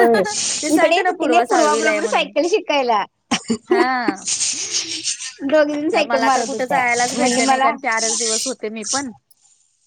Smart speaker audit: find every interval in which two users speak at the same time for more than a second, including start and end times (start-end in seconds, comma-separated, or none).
0.8-2.3, 6.1-7.7